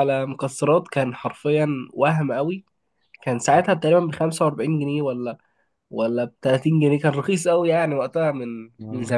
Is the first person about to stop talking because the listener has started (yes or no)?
yes